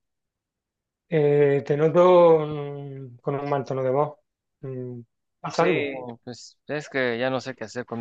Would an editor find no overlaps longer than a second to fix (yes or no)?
yes